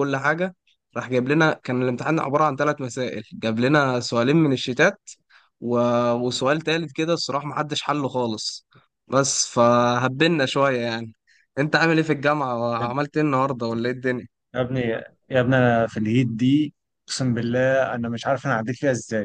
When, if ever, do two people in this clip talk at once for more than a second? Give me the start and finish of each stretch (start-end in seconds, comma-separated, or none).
none